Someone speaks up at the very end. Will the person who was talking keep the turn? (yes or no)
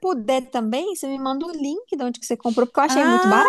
no